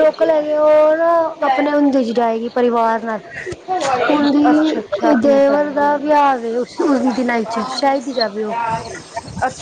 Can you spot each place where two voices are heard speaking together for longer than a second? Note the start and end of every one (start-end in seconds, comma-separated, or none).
4.1-6.1